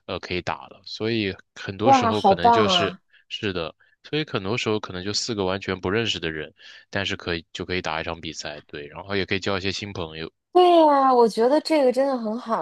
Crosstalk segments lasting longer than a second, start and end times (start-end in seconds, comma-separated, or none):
1.8-3.0